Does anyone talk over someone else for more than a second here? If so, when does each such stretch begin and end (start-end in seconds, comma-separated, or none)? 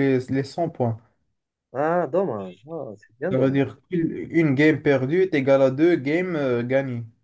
none